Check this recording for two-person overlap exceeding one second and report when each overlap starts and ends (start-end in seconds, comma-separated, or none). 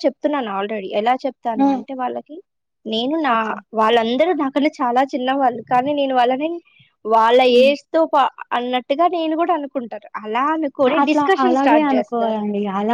none